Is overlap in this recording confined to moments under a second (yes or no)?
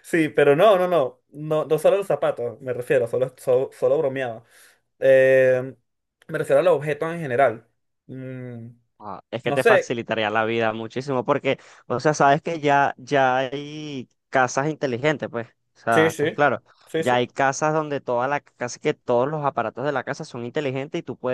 yes